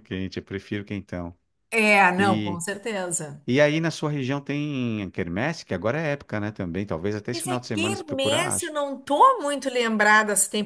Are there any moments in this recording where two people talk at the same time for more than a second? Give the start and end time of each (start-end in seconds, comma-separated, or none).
7.3-8.7